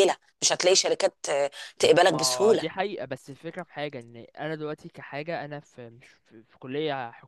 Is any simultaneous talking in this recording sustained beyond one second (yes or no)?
no